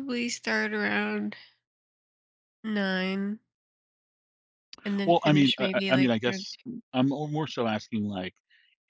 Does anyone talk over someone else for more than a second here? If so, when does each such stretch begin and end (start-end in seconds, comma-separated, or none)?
5.0-6.5